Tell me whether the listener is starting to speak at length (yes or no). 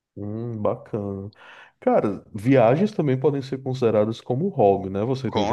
yes